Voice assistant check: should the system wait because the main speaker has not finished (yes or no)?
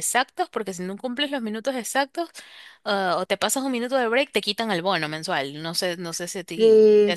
no